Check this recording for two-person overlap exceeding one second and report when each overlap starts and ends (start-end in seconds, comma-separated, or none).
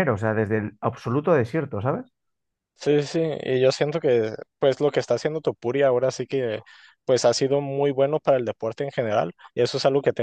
none